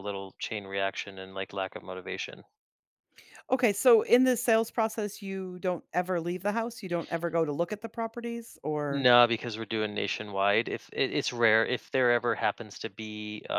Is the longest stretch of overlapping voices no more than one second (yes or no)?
yes